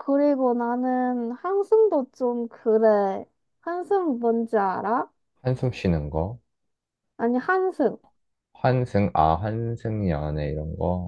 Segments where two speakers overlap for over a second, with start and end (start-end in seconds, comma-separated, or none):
none